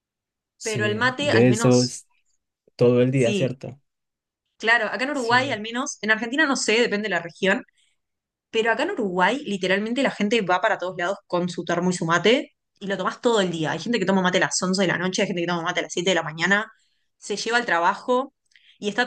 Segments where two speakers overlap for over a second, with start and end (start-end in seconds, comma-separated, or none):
0.6-2.0